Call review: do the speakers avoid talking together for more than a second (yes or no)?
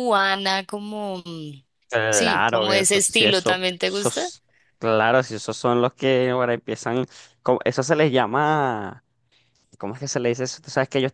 no